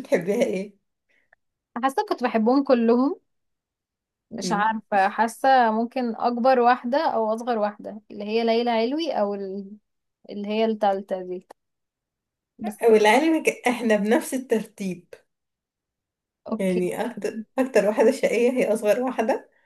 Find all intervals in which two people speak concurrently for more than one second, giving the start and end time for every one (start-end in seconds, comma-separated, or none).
none